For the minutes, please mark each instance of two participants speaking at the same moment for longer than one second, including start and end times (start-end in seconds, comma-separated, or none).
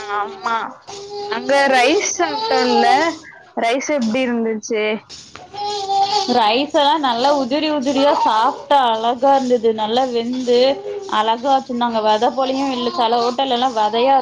none